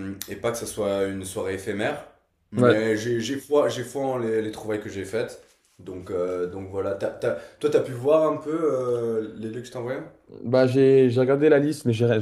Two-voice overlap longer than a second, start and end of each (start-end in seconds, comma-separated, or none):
none